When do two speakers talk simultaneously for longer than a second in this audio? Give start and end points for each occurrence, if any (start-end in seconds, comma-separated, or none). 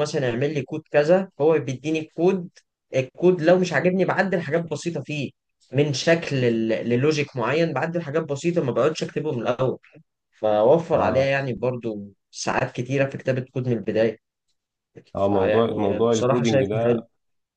15.2-16.7